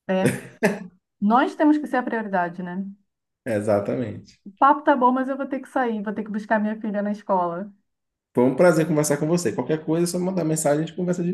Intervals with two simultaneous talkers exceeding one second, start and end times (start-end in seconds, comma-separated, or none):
none